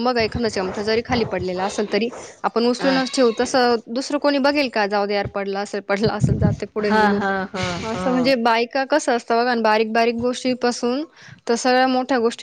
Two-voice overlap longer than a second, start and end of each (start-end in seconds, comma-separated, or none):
none